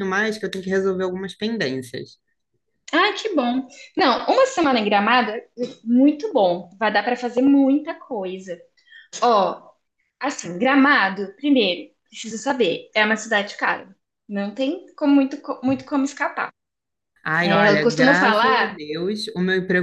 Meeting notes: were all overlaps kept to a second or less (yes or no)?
no